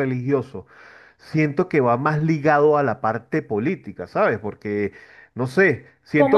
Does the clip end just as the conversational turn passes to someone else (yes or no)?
no